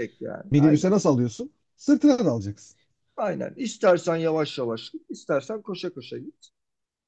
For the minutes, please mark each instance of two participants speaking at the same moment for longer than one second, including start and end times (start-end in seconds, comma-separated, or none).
none